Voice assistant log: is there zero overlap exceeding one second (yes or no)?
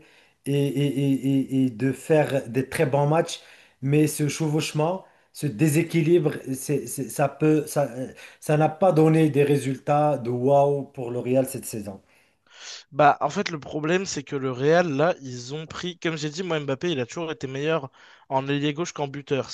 yes